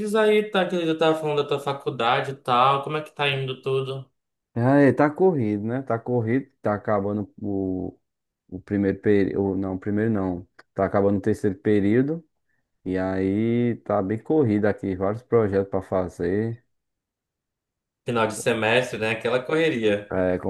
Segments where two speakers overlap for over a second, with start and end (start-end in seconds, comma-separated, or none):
none